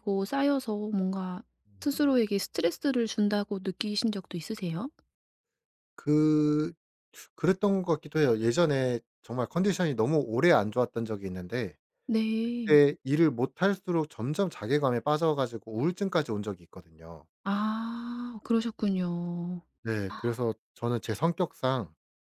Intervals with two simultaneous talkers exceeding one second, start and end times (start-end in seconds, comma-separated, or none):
none